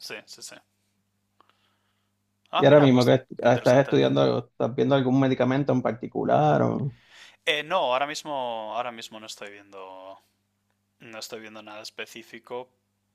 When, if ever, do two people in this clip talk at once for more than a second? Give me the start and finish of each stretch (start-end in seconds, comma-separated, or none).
2.6-4.0